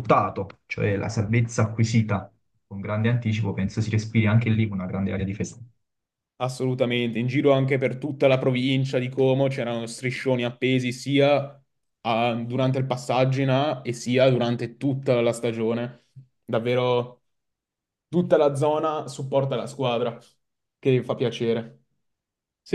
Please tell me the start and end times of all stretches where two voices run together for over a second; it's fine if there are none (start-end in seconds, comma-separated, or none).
none